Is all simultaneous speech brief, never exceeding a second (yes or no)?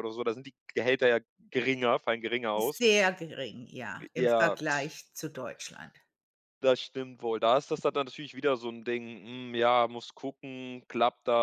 yes